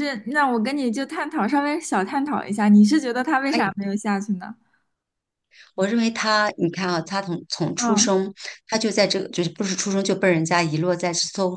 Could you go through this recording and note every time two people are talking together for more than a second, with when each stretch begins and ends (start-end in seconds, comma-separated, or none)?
none